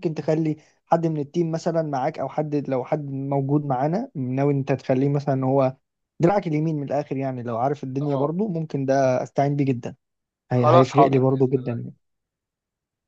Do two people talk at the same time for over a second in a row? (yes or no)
yes